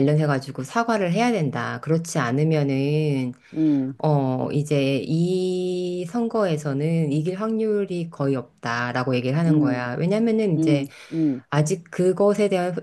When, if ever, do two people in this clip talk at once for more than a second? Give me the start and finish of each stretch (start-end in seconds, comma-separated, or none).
none